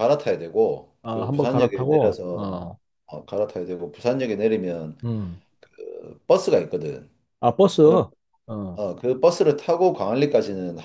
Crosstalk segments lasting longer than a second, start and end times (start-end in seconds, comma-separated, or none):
1.0-2.6